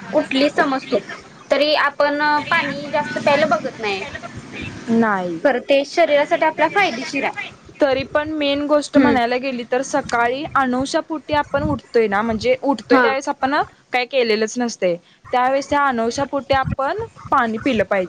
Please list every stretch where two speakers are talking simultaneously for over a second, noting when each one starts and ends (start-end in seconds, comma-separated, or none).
none